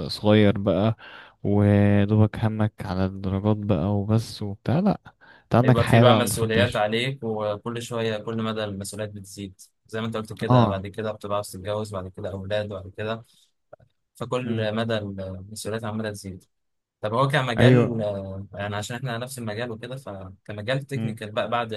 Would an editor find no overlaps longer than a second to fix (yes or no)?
no